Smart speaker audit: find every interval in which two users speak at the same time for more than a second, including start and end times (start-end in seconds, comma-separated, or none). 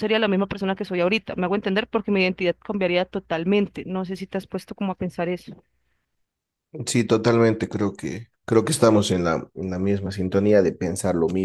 none